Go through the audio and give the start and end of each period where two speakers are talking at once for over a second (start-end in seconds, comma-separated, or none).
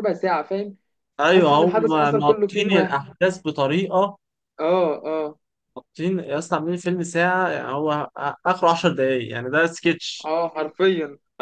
1.3-3.0